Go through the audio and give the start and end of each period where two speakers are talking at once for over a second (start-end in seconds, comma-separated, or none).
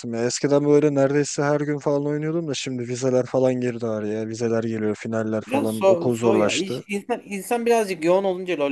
5.5-6.8